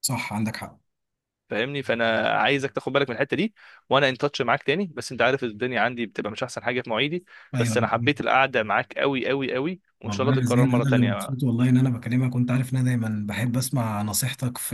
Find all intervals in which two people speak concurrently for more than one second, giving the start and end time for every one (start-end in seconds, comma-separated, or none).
10.0-11.4